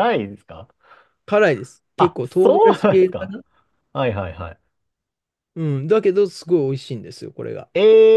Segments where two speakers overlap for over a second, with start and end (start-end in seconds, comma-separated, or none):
2.0-3.3